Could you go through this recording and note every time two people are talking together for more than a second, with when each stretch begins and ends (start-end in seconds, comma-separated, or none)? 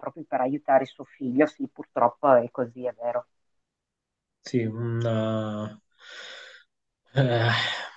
none